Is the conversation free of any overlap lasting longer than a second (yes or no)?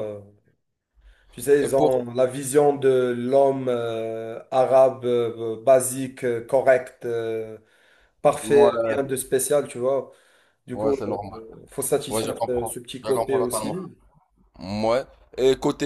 no